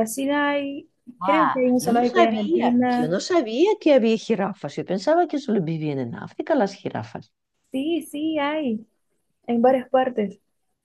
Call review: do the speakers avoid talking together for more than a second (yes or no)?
no